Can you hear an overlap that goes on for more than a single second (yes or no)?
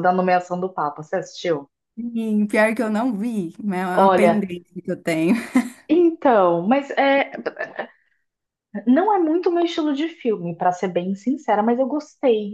no